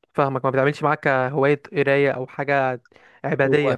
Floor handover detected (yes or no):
yes